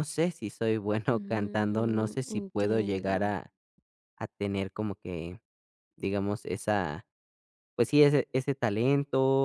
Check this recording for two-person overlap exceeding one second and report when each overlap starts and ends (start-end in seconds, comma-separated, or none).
1.1-3.3